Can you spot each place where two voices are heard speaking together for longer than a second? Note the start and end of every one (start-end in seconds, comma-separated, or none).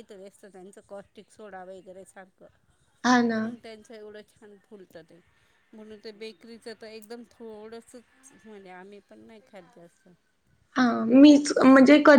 none